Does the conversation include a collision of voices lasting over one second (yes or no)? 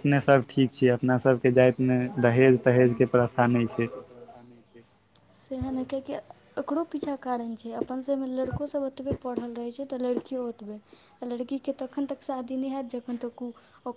yes